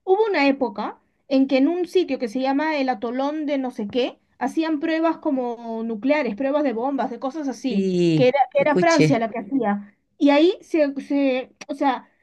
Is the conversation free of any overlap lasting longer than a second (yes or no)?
no